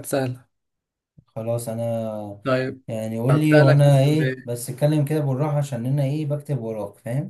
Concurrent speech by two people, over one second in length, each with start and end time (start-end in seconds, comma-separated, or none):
3.3-4.5